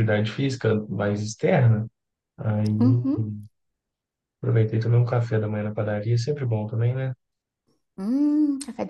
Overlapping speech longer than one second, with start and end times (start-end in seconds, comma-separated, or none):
none